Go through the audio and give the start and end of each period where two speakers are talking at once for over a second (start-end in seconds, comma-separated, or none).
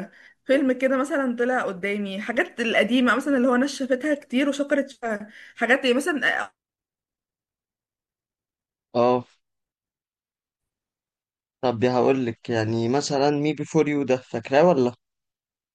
none